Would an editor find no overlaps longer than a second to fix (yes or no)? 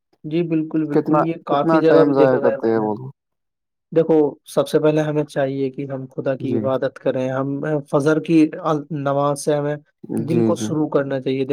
no